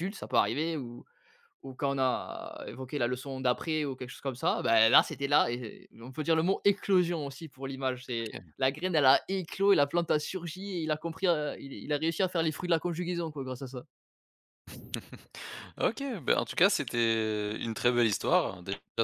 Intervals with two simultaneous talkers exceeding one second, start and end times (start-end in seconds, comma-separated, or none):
none